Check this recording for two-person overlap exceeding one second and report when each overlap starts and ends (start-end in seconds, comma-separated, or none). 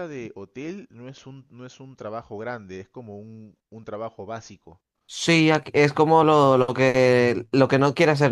none